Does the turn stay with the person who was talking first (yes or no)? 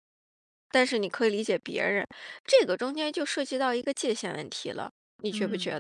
no